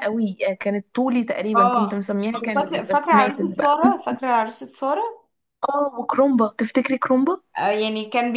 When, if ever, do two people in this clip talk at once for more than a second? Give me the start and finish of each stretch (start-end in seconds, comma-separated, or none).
1.6-3.8